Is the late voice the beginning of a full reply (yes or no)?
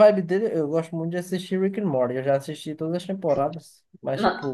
no